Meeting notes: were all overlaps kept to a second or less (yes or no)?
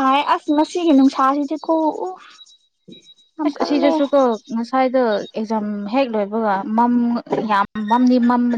yes